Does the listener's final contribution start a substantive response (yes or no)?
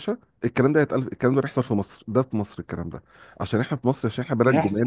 no